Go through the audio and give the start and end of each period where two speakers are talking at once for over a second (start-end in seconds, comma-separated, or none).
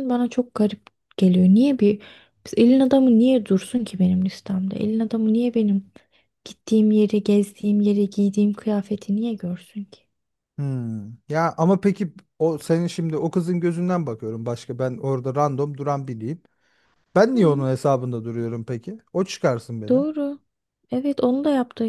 none